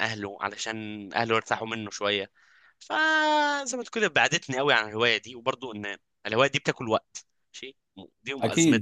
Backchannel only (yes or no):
no